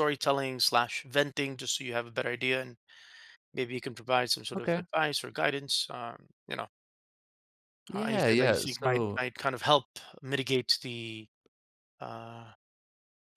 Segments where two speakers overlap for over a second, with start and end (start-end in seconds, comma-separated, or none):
7.9-9.2